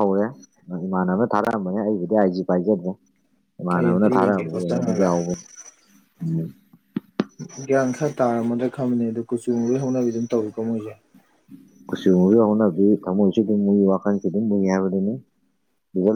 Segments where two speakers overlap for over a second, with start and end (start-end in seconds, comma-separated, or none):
3.8-5.1